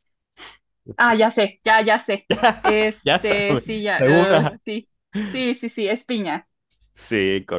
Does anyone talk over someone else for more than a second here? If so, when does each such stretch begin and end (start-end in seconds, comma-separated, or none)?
3.0-4.6